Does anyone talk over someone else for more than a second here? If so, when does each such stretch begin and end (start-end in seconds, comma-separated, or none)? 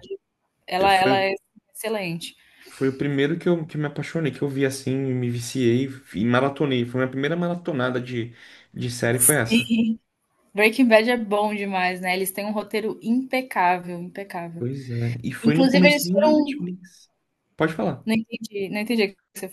15.4-16.7